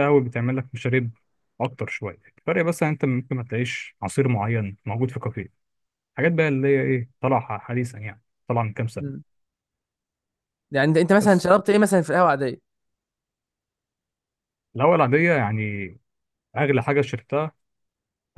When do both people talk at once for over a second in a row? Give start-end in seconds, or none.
none